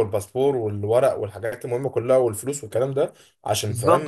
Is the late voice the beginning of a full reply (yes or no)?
yes